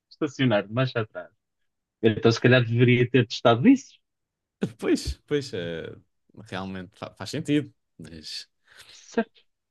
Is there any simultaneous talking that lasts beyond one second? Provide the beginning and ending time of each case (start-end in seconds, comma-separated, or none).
none